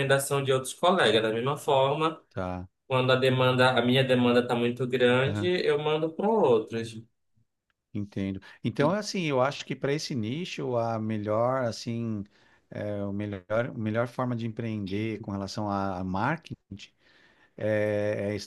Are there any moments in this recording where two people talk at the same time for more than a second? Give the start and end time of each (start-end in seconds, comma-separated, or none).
none